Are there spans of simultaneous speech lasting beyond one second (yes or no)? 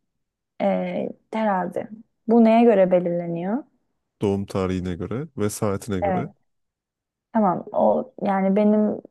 no